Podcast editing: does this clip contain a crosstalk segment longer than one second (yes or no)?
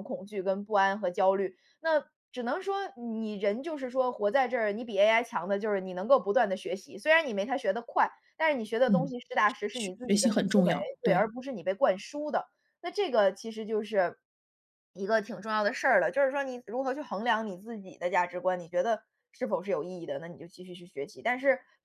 yes